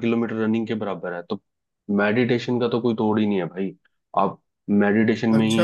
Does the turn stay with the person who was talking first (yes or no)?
no